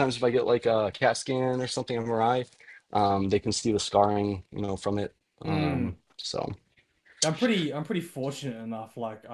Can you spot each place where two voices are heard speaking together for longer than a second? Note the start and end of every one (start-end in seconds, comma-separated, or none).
none